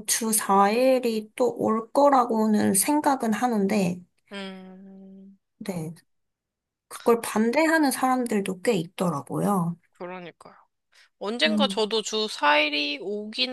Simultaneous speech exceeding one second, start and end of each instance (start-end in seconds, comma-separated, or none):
none